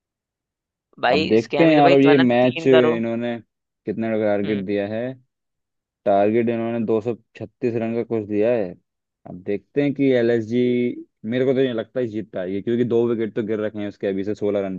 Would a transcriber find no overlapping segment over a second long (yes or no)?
no